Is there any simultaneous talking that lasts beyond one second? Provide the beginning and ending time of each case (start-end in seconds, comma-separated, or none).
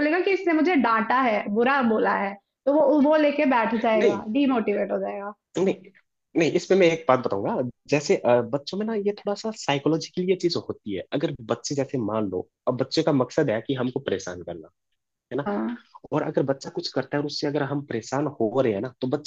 none